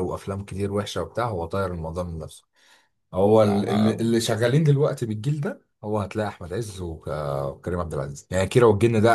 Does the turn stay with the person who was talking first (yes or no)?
yes